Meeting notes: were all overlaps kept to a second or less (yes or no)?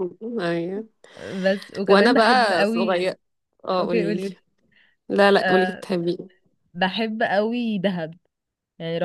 no